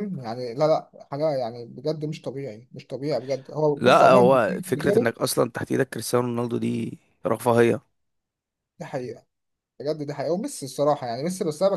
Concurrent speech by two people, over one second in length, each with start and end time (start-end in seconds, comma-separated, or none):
3.7-5.1